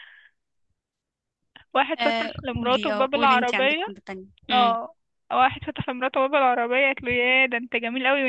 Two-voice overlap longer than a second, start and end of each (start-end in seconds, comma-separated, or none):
2.0-3.8